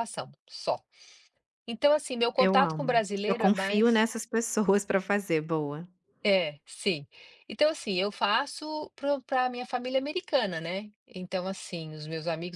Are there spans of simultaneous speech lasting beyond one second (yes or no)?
yes